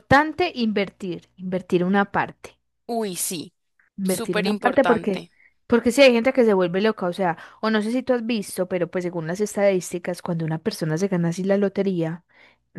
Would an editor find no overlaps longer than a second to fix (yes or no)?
no